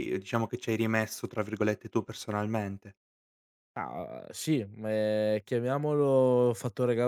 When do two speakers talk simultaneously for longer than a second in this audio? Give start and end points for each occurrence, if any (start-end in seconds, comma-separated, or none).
none